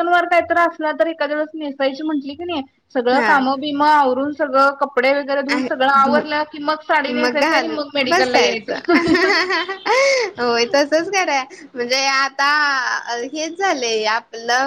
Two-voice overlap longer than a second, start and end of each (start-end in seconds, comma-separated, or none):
7.2-8.8